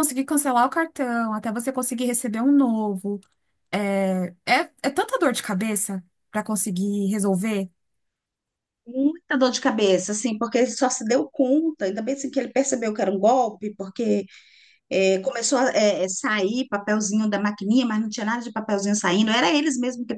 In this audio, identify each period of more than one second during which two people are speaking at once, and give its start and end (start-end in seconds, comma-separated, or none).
none